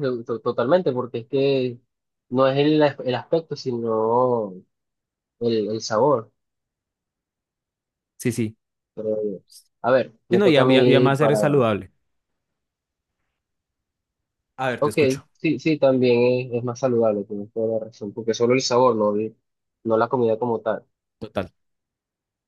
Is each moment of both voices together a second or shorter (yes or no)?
no